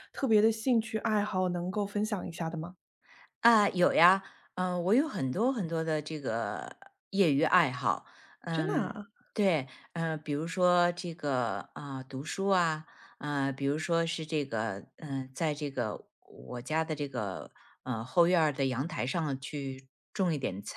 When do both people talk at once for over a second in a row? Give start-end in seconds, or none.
none